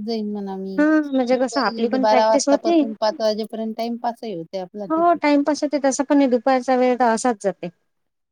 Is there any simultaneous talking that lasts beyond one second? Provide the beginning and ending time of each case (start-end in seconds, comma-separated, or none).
0.8-2.8